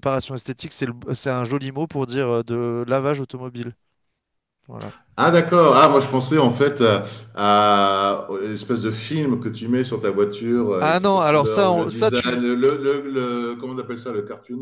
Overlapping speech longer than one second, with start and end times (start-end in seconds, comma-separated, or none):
10.8-12.5